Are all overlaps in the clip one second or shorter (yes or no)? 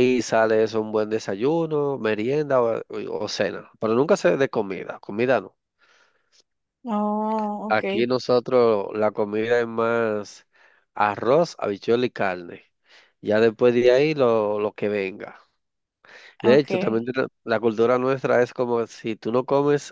yes